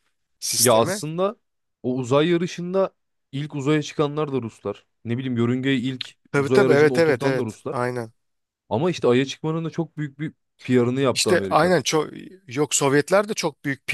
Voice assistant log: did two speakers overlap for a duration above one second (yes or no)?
yes